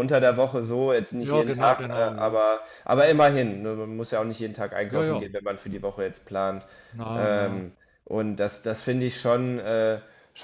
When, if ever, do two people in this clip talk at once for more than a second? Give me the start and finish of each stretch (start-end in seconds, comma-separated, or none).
1.2-2.4